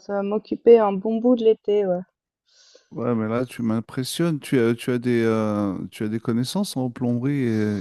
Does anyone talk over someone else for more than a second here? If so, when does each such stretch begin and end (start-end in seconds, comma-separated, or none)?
none